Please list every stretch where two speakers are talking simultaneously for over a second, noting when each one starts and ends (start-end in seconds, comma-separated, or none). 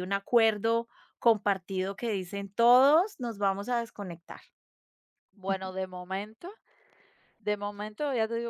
none